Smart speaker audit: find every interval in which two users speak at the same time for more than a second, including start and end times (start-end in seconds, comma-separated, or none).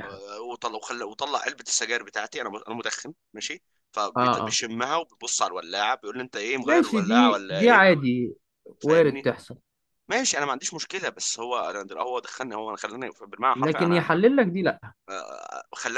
6.6-7.9